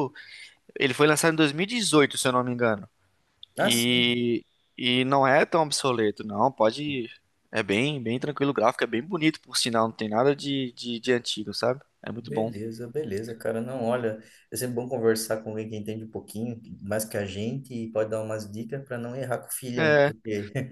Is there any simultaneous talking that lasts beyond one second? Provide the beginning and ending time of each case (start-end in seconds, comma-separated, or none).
none